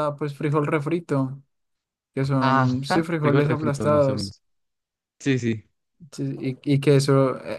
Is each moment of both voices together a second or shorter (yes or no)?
no